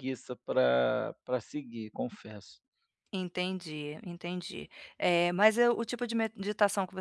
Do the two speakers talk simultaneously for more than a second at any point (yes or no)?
no